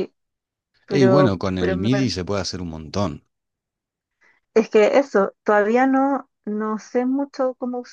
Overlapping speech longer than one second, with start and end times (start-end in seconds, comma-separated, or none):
0.9-2.2